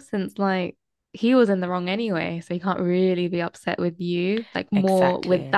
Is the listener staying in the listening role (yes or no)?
yes